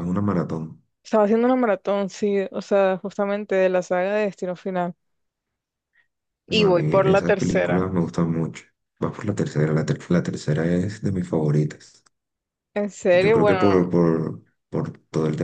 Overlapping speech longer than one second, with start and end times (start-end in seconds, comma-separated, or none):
6.5-7.8